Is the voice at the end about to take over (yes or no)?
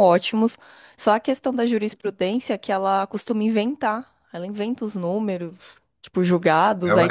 yes